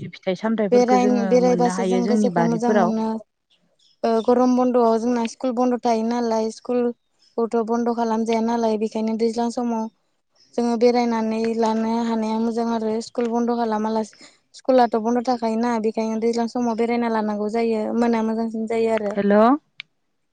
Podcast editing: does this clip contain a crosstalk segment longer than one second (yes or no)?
yes